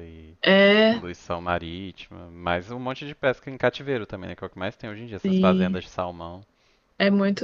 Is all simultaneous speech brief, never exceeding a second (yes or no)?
yes